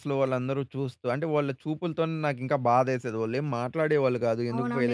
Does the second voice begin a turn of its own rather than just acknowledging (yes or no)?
yes